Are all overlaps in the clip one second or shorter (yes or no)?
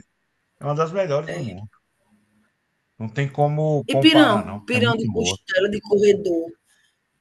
no